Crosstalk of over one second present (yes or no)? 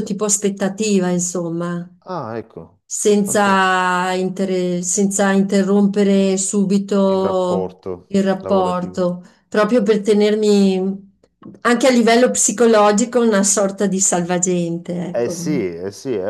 yes